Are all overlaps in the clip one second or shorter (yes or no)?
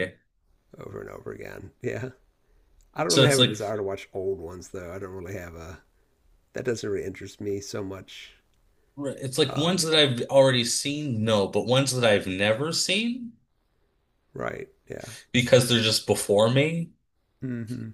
yes